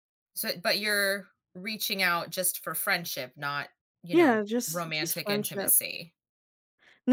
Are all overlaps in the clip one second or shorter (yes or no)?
no